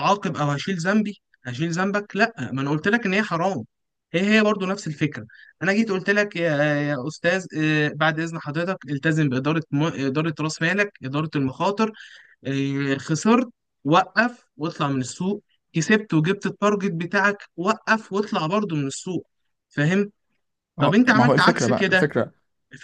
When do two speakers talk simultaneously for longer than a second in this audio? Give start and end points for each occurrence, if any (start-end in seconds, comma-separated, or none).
20.8-22.1